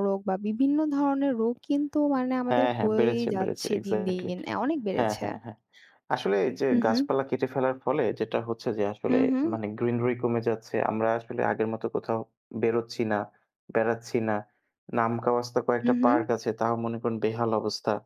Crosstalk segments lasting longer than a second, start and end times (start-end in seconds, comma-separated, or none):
2.5-4.3